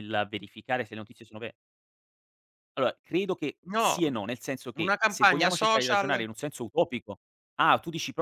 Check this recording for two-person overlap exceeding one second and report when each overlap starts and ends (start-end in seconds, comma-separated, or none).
4.7-6.3